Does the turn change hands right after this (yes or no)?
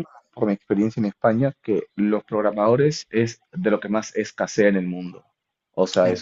no